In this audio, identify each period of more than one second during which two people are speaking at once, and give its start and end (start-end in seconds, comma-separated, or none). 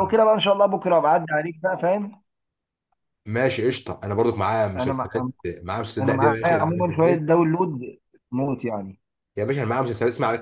6.0-7.2